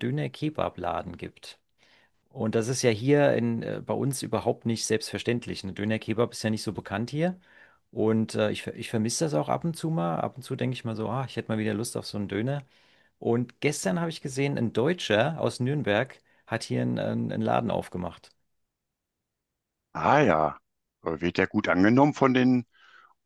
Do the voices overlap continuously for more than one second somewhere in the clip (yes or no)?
no